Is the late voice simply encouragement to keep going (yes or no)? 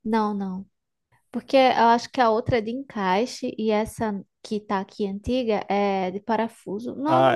no